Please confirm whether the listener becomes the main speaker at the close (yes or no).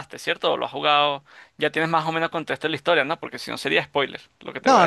yes